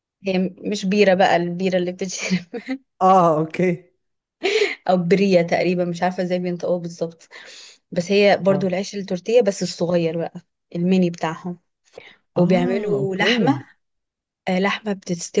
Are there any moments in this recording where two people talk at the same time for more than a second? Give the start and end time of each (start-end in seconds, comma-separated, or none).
12.4-13.6